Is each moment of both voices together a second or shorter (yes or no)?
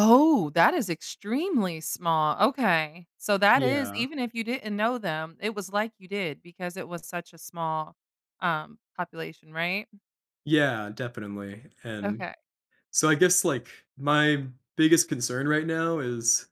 yes